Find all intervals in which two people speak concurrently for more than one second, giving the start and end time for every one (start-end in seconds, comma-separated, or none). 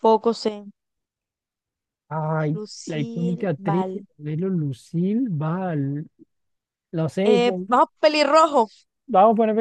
2.5-4.0